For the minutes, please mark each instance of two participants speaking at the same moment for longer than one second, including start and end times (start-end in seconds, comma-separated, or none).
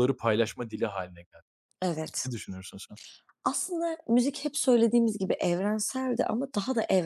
none